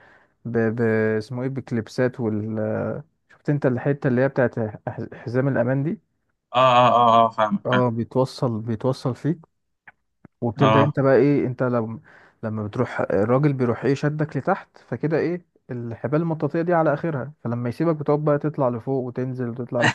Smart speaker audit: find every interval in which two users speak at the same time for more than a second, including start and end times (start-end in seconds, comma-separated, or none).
none